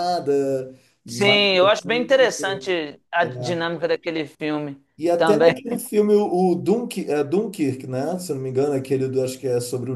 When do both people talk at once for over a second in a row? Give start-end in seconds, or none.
1.0-2.3